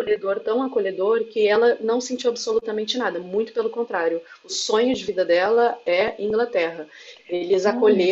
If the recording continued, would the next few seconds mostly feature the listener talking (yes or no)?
no